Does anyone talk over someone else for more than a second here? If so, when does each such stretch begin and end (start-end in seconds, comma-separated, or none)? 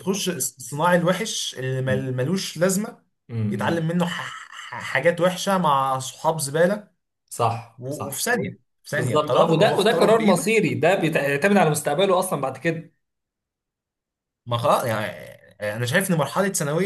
8.9-10.5